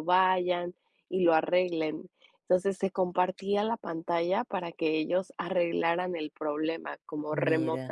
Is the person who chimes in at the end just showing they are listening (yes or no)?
yes